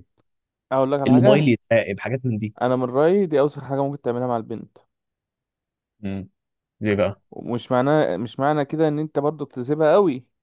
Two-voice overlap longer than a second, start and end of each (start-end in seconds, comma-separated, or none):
none